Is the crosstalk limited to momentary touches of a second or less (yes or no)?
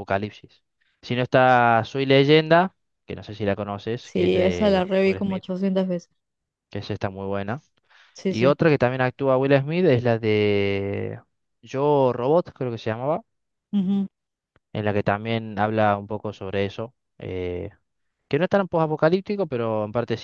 no